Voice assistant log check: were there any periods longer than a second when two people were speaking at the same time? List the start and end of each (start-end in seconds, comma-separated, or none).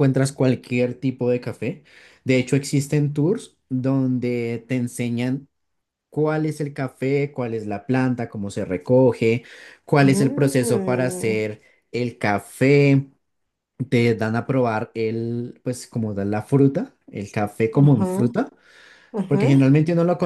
10.0-11.4